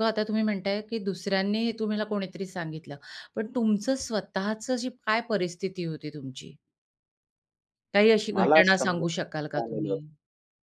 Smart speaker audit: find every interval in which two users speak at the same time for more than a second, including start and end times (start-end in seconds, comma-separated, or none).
8.3-10.0